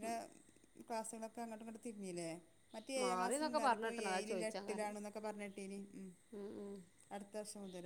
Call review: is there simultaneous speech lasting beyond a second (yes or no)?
yes